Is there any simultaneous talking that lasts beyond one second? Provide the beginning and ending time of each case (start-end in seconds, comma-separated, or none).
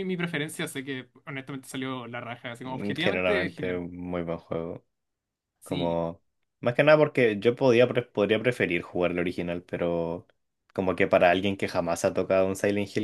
2.6-3.8